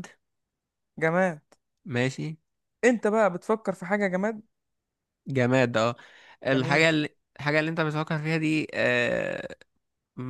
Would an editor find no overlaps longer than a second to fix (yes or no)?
yes